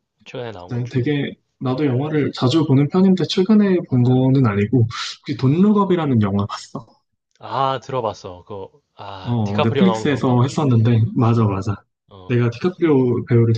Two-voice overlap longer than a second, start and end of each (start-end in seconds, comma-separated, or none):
9.2-10.4